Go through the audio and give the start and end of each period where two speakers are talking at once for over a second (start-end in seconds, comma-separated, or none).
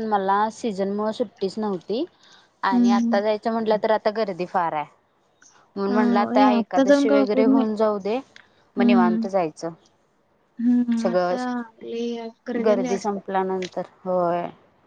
5.9-7.7